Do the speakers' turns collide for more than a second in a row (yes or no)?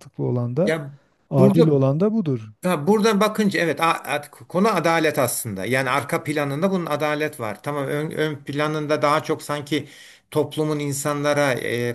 no